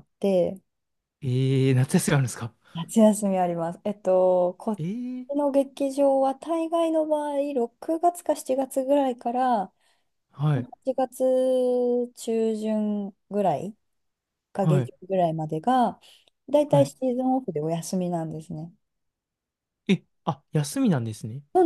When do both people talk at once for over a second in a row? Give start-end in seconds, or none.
none